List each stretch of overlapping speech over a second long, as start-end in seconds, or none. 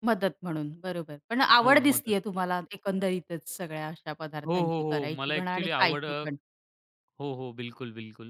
4.4-6.2